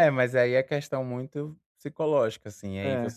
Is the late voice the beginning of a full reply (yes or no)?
no